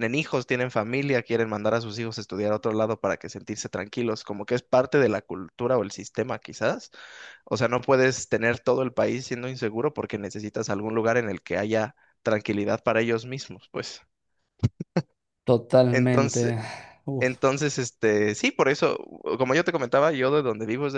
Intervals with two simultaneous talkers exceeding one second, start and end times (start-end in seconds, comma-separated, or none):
none